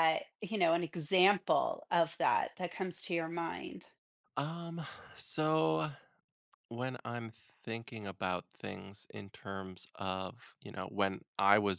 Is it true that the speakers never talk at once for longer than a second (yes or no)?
yes